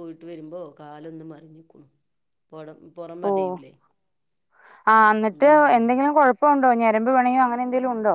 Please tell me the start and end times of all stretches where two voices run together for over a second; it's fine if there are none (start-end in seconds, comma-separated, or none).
none